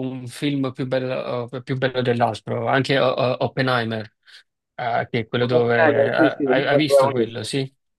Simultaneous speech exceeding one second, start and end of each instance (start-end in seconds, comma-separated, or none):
5.4-7.4